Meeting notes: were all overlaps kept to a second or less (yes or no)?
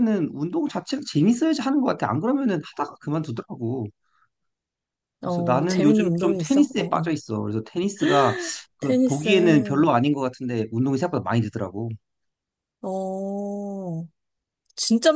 no